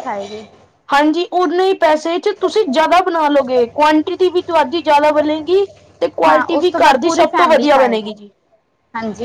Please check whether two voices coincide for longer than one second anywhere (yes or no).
yes